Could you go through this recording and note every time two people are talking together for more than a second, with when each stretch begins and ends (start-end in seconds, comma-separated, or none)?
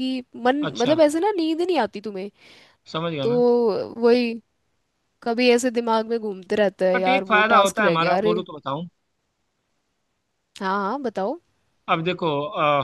6.9-8.3